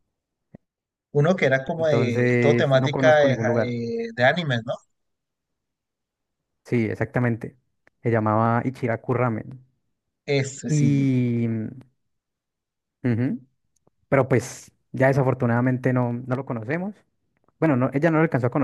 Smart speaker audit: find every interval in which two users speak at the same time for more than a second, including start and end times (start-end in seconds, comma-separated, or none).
1.8-3.8